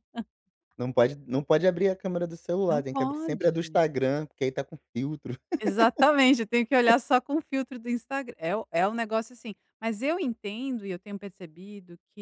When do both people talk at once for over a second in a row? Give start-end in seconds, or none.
2.6-4.0